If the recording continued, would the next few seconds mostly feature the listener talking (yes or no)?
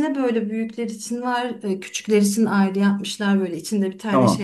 no